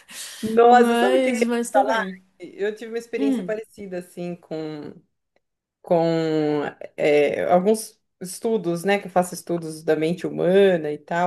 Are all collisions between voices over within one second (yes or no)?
no